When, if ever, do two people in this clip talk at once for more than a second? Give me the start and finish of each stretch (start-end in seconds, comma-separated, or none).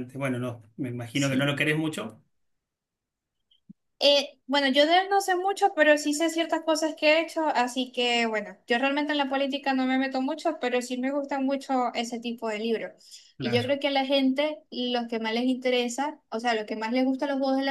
none